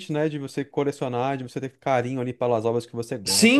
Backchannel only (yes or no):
no